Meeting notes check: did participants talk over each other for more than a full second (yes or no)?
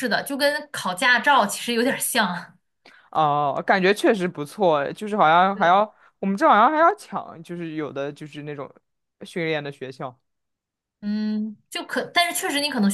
no